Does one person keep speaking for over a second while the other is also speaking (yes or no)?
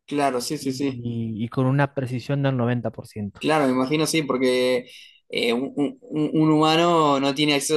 no